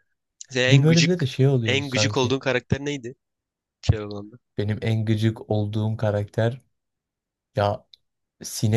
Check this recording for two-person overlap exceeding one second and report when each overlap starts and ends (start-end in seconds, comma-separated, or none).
0.7-2.3